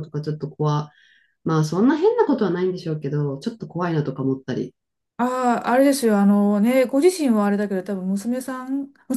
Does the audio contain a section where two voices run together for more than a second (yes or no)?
no